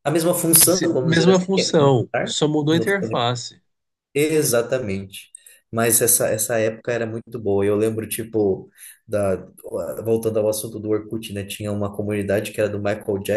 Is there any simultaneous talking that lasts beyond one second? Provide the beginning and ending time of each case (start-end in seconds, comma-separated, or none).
0.7-2.9